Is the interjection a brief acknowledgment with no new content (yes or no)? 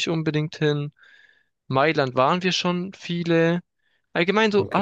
yes